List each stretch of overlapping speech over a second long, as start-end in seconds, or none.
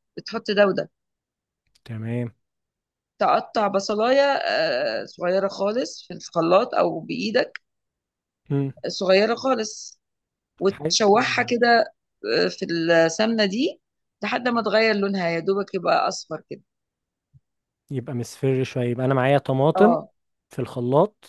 none